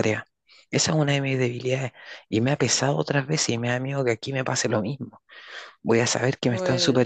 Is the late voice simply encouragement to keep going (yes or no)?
yes